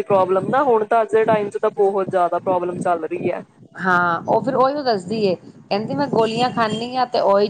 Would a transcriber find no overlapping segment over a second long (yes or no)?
yes